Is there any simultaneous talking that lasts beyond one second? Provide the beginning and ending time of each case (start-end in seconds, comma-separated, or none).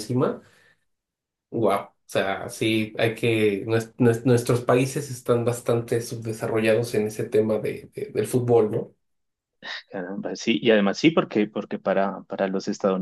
none